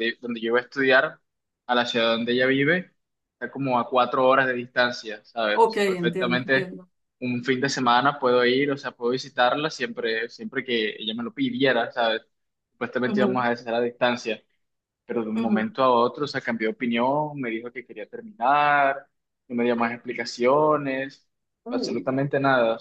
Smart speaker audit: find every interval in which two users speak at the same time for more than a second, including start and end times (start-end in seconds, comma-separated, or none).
5.5-6.7